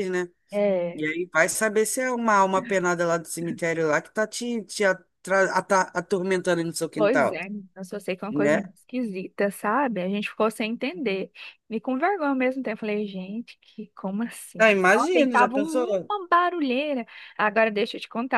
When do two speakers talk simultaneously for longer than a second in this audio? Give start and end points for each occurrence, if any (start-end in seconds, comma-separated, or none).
14.6-16.1